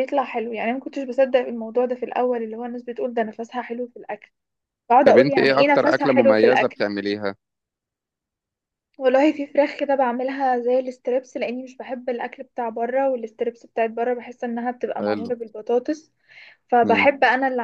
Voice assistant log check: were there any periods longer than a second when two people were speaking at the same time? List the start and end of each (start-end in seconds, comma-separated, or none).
5.1-6.8